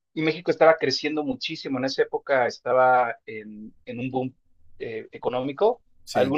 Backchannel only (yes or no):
yes